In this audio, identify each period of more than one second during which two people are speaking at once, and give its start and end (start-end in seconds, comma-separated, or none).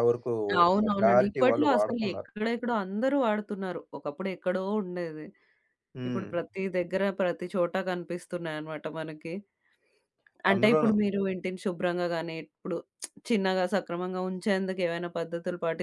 0.8-2.3